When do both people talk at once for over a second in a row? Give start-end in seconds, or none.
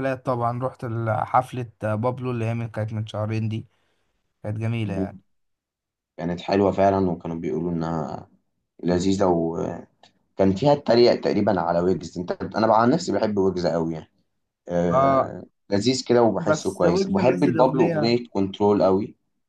16.4-18.2